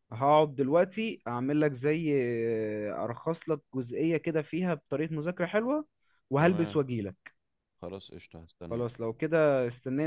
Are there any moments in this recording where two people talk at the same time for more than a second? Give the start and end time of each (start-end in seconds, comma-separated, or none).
none